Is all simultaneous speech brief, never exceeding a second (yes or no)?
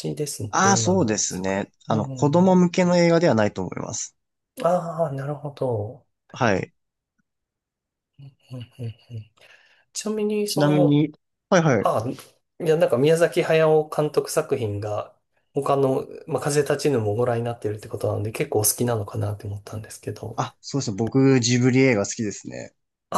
no